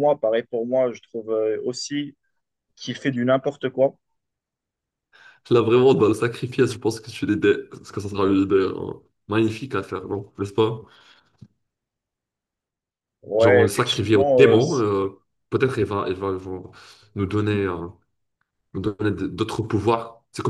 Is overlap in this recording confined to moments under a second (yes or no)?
no